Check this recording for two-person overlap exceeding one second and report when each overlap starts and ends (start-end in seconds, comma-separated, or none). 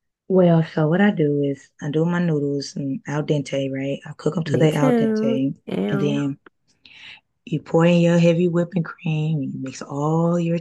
4.5-6.2